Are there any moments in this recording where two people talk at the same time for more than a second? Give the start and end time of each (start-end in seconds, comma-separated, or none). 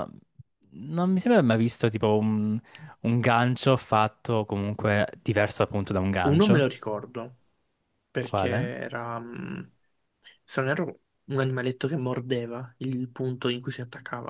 none